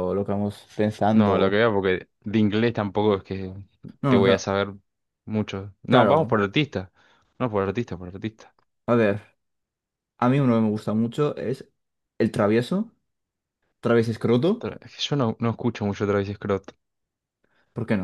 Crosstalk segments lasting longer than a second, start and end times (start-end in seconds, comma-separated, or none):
none